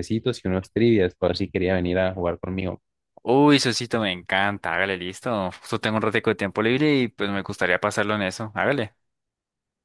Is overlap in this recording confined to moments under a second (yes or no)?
yes